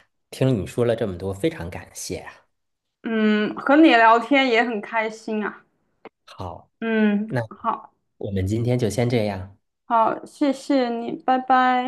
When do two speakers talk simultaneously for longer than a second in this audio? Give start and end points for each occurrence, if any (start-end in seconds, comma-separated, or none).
none